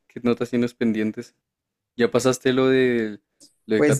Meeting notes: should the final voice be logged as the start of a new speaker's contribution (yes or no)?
yes